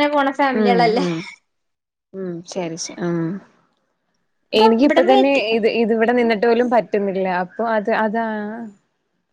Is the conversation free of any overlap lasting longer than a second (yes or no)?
yes